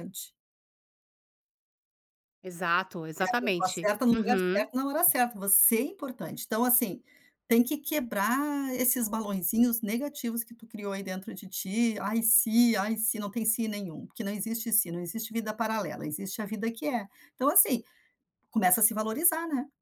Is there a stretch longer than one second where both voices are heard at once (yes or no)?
yes